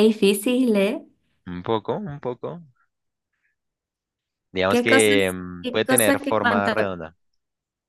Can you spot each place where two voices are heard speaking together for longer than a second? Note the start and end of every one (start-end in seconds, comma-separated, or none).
4.7-6.7